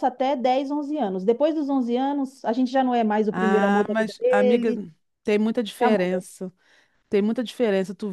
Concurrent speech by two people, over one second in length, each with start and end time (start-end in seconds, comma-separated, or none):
3.3-4.7